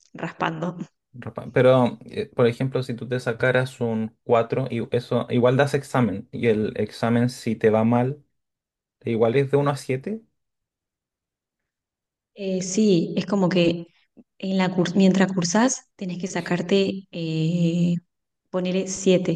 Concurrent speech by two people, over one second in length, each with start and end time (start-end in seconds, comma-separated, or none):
none